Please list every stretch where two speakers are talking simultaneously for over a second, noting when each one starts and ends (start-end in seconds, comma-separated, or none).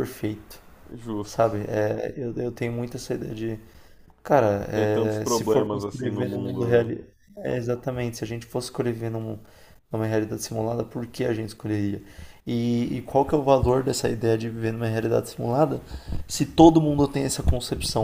4.7-6.8